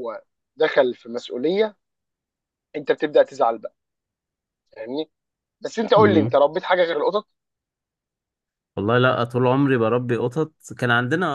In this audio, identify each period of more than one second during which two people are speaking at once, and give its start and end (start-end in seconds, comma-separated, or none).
none